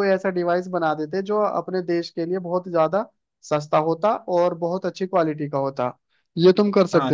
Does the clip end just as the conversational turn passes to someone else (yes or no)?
yes